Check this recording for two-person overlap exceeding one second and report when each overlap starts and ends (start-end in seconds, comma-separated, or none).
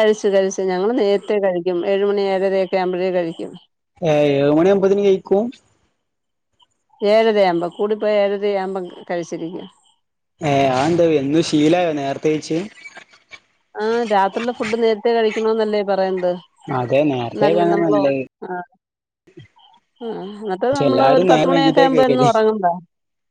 20.7-22.3